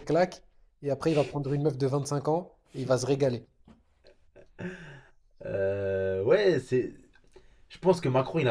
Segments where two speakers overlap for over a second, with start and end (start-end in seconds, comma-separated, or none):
none